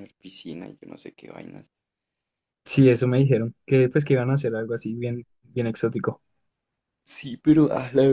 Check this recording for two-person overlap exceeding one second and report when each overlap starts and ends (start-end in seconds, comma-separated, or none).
none